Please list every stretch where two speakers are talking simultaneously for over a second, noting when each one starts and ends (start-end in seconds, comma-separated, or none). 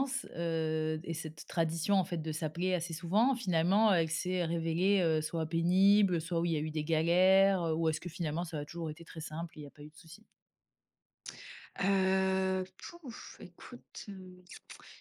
none